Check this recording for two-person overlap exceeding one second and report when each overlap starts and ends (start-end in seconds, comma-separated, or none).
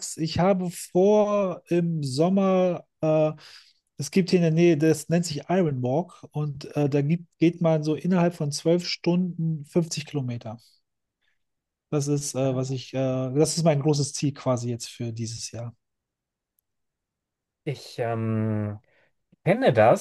none